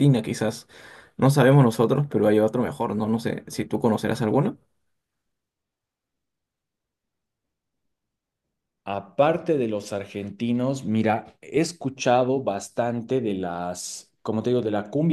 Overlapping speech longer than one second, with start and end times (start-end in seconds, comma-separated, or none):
none